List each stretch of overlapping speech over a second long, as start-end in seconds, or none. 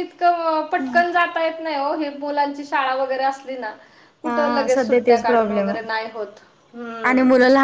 4.3-5.9